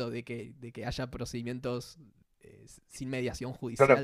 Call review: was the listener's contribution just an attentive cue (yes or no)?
no